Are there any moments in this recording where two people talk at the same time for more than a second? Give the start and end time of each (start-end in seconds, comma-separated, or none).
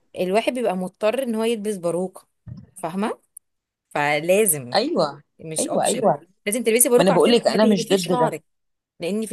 7.0-8.3